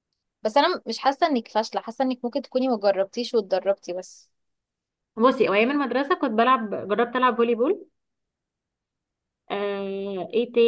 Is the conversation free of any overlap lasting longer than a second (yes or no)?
yes